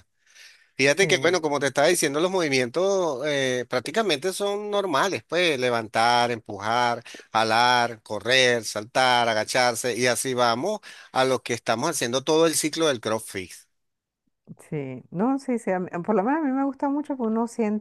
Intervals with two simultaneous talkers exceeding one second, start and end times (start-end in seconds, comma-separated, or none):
none